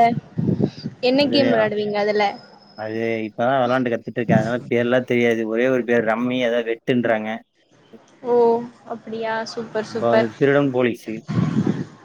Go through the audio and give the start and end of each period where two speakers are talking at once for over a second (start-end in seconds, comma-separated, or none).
none